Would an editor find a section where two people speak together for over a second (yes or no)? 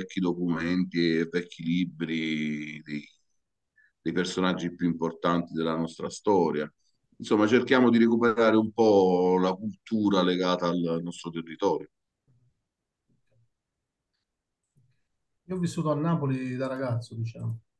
no